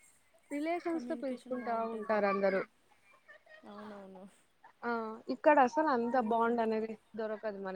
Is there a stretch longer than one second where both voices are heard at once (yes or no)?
yes